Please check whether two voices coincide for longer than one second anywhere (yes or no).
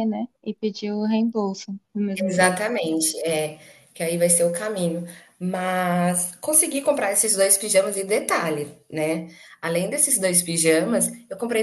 no